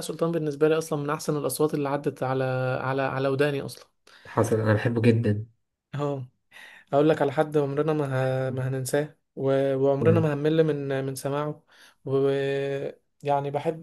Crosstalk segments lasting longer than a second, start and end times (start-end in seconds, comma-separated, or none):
none